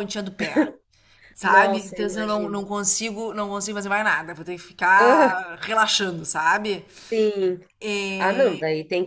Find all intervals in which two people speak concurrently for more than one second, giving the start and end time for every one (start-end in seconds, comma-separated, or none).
1.4-2.7